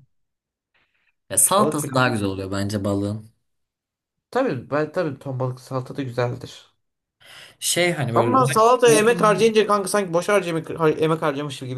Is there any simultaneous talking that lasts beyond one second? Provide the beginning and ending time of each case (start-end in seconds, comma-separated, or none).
8.1-9.6